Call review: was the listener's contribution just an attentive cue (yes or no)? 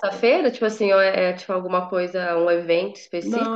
no